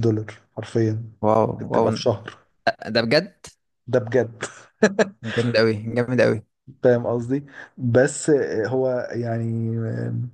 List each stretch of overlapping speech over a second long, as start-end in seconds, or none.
none